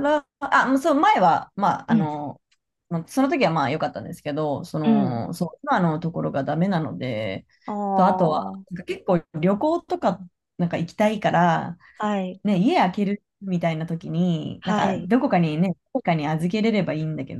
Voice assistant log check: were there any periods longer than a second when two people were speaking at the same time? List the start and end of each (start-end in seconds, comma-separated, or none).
none